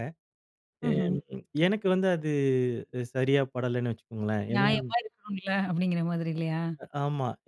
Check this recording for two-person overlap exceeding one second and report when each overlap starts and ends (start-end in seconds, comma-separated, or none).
none